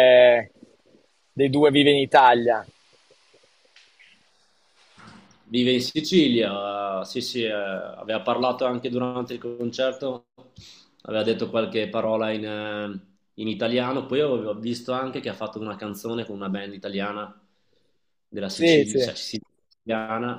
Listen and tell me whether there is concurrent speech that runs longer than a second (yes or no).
no